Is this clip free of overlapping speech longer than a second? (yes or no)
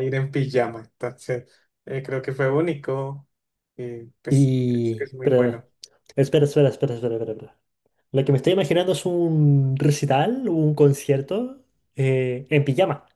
no